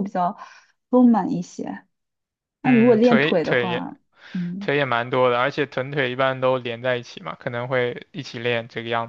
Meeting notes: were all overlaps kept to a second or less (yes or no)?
no